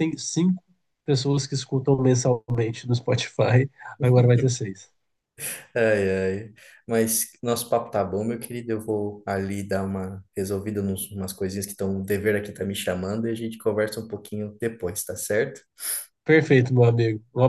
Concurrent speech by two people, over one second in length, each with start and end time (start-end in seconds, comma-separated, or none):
none